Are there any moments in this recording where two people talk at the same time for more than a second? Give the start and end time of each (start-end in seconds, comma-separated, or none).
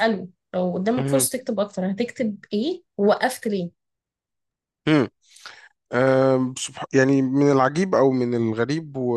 none